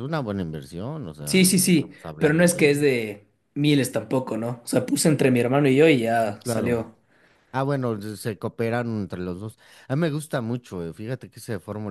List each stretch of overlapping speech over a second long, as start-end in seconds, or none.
1.2-2.9